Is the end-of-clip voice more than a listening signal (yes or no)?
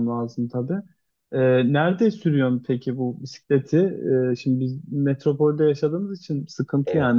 no